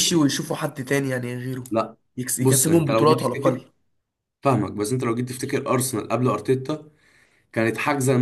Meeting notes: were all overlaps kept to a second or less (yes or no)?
no